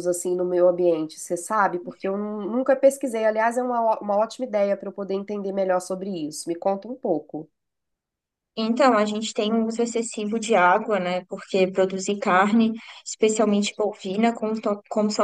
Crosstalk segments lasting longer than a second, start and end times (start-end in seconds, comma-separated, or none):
none